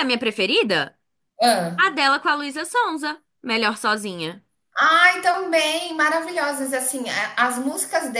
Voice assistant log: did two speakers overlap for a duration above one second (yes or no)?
no